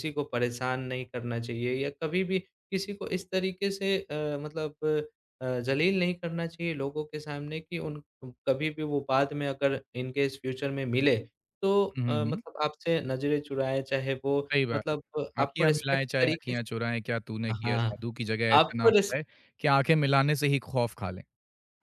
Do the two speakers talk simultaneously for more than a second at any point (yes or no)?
yes